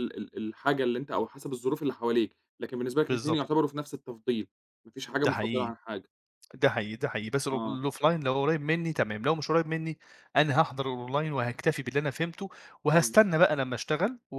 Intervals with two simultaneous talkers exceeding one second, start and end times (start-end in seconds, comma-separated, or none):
none